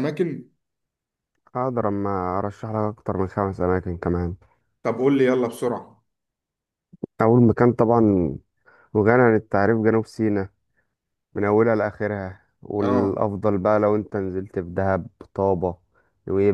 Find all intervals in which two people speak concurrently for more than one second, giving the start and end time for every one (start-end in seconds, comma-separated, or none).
none